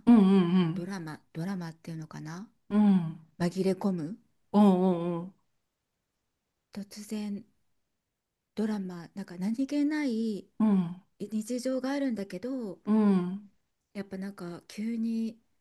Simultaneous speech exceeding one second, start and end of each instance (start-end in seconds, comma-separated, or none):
none